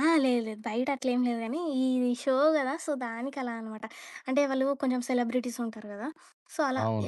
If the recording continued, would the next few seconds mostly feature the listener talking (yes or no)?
no